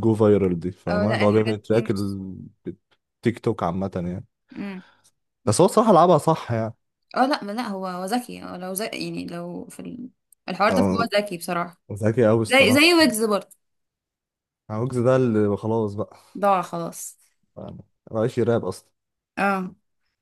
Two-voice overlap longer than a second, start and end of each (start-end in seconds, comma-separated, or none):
0.9-2.2